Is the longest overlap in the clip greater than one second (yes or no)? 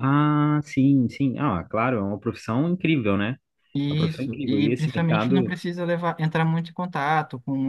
yes